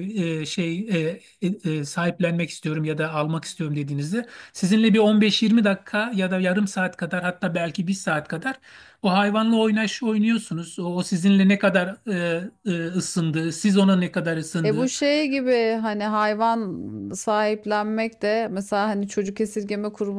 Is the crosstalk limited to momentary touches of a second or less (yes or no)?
yes